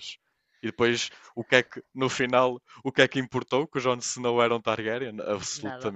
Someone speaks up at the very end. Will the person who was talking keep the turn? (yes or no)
no